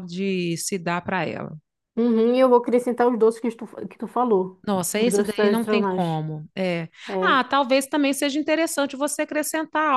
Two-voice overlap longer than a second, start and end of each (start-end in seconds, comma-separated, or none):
4.7-6.1